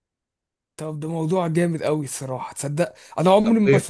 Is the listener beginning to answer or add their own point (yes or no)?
no